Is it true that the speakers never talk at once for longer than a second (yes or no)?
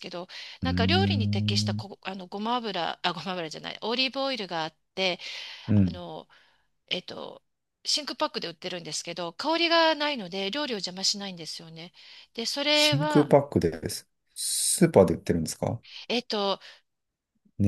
no